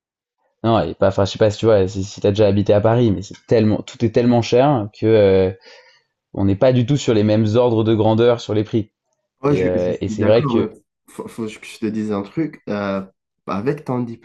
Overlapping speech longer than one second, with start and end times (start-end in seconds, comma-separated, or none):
9.5-10.7